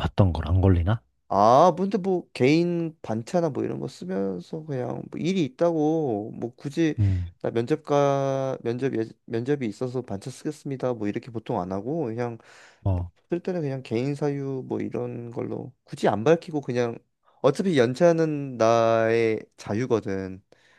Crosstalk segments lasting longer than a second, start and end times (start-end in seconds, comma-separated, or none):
none